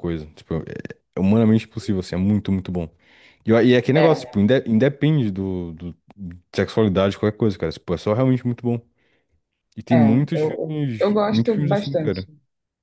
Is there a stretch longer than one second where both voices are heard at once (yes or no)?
yes